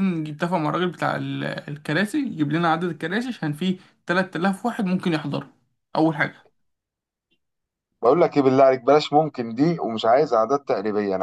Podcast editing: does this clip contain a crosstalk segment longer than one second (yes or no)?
no